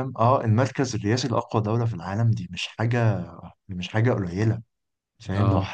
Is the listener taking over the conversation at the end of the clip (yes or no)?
no